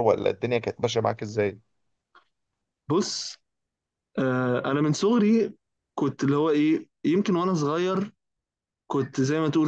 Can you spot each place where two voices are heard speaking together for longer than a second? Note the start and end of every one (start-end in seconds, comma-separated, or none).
none